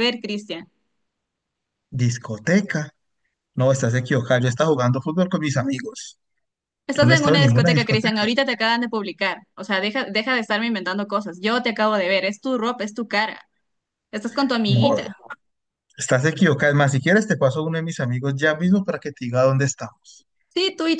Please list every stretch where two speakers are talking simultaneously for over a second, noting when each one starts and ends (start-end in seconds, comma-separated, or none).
6.9-8.3